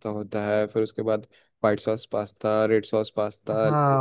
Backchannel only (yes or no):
no